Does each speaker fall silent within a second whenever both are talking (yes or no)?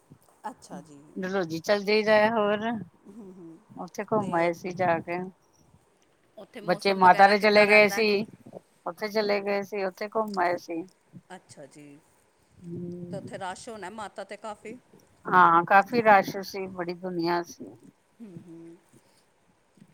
no